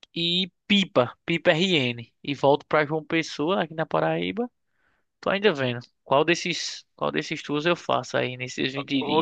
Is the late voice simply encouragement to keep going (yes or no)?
no